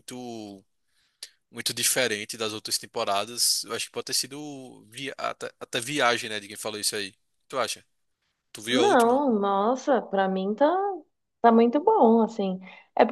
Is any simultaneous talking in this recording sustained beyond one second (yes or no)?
no